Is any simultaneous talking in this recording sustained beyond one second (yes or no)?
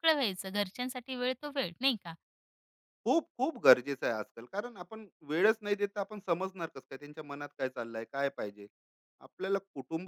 no